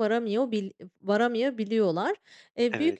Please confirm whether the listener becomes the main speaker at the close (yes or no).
no